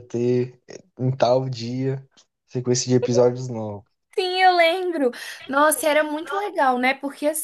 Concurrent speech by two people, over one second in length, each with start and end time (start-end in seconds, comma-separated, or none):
none